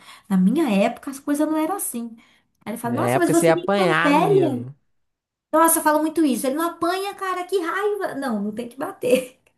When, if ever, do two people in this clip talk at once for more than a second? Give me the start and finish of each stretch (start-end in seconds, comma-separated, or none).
2.8-4.7